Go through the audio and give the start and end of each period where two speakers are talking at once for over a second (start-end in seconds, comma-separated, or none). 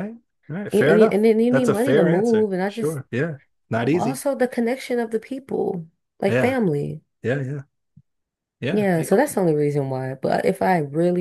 0.7-3.0